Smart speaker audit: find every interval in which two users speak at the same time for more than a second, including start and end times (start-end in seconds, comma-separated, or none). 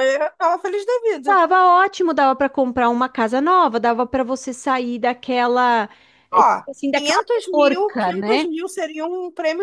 6.3-8.4